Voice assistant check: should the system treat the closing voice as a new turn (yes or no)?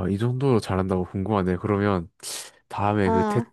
no